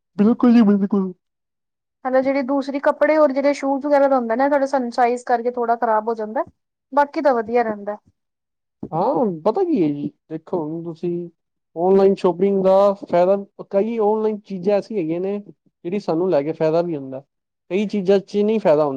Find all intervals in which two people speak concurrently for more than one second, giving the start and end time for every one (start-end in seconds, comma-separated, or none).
none